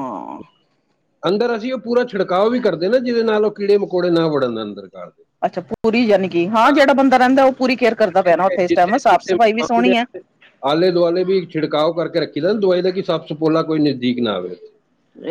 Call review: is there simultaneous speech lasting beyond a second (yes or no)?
yes